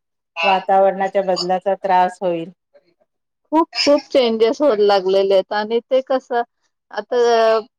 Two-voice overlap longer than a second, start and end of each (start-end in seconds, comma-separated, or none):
none